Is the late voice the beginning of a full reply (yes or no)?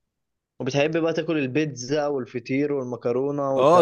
yes